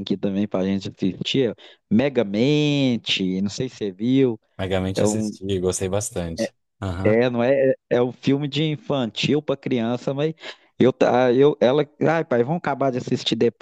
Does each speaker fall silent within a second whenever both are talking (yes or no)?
yes